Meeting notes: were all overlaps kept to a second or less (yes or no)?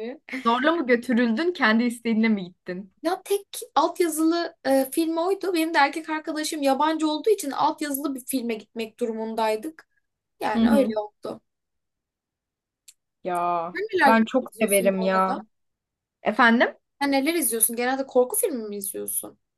no